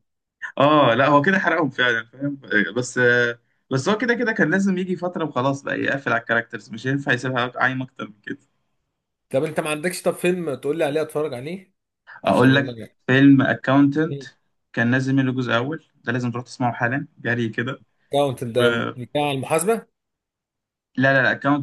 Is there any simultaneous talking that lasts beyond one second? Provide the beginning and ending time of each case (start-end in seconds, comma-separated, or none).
none